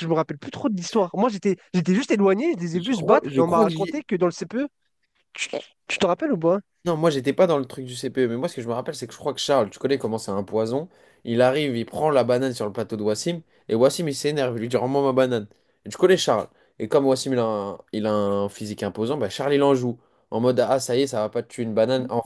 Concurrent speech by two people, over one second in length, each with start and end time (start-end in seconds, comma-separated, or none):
2.7-4.0